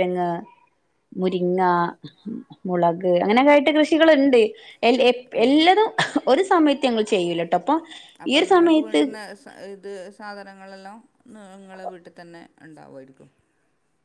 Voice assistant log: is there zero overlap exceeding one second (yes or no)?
yes